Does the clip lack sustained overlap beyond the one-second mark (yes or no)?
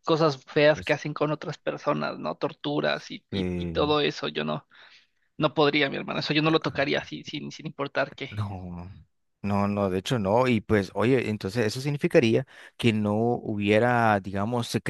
yes